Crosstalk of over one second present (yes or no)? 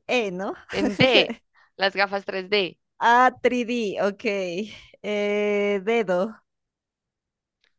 no